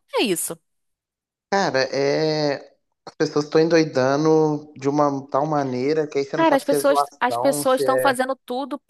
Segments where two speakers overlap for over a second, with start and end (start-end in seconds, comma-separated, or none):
6.3-8.2